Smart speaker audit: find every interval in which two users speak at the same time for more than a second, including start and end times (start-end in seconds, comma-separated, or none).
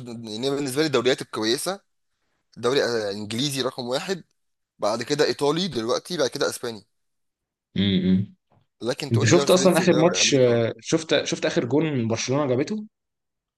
9.1-10.7